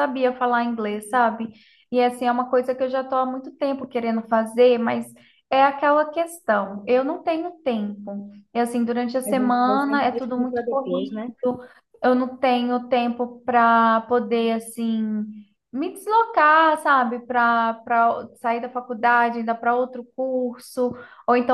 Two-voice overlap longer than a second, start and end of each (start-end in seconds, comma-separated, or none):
9.3-11.3